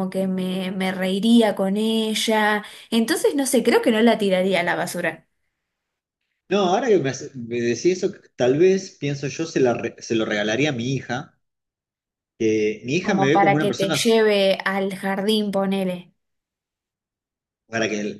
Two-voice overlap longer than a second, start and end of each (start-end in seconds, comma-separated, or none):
13.0-14.2